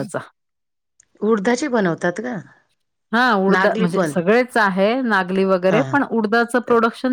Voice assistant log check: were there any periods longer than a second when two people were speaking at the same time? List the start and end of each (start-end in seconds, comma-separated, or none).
none